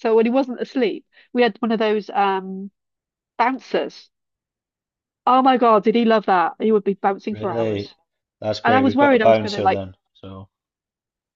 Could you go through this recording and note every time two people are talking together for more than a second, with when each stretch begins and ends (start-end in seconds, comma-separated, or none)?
8.6-9.8